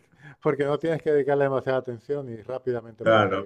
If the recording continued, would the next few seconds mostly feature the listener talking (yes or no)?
yes